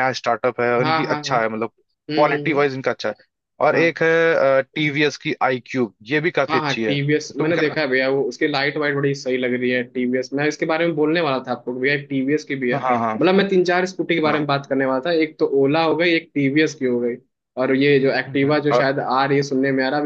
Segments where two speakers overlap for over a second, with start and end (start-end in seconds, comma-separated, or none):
6.5-7.8